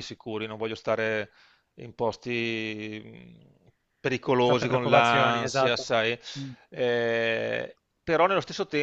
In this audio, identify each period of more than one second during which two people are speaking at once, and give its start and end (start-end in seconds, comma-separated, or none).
4.4-5.9